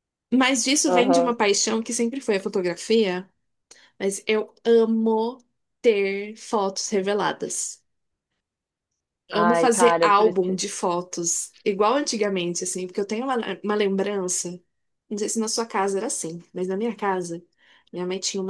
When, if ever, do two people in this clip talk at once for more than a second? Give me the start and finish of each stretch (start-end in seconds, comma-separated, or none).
9.3-10.6